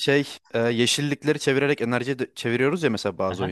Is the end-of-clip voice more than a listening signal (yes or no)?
yes